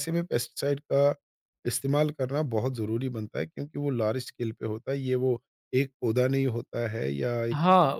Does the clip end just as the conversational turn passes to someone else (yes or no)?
yes